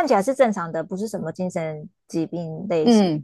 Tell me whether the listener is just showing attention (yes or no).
no